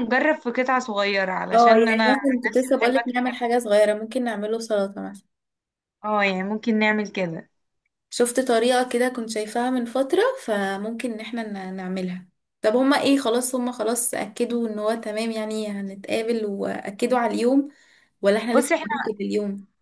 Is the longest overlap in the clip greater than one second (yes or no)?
yes